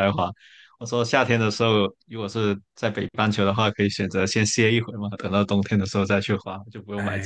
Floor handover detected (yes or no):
yes